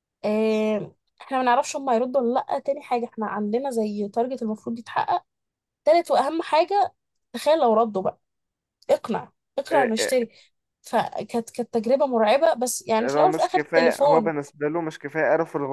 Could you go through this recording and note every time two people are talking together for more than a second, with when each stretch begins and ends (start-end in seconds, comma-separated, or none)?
13.0-14.3